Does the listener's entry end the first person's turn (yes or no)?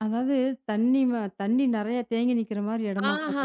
yes